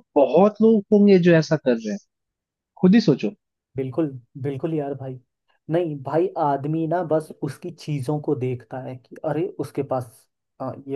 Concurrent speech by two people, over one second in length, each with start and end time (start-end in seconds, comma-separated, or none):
none